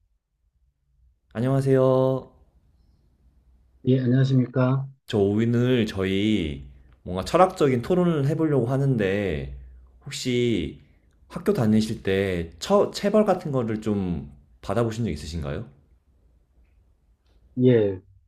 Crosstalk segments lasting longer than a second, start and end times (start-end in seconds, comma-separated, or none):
none